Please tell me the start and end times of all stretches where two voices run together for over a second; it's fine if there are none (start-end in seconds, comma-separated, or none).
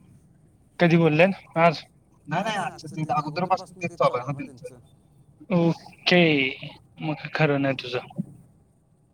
2.4-4.8